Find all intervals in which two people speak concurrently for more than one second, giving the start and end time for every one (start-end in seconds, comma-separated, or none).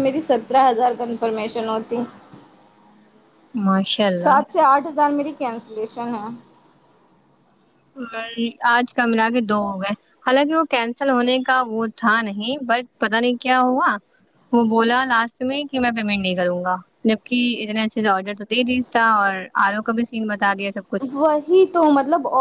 none